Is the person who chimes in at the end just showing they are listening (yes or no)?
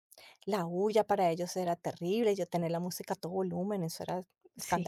no